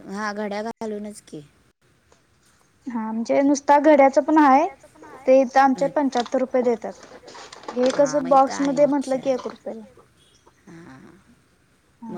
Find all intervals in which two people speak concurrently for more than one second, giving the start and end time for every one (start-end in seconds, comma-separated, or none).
8.0-9.4